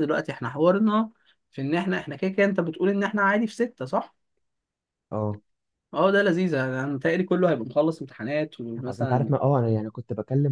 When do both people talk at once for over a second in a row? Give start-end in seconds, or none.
none